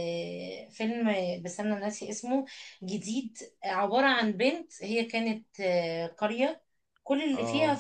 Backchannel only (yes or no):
yes